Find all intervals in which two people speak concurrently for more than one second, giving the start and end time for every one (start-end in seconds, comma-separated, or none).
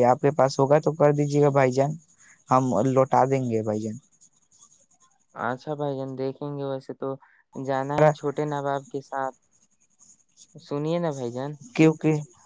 none